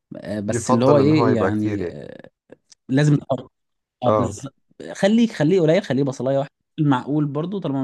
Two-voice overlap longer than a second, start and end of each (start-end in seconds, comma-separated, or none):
0.5-2.0